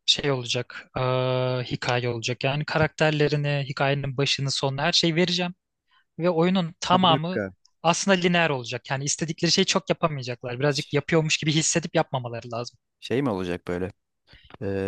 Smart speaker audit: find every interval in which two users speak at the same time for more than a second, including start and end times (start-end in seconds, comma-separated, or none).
none